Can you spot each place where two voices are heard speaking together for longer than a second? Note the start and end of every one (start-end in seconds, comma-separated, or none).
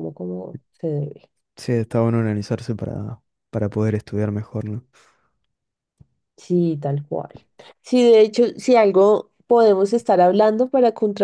none